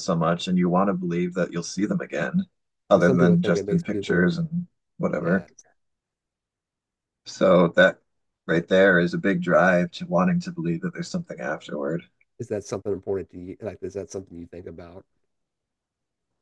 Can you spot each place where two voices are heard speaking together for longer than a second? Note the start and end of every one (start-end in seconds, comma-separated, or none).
2.9-4.3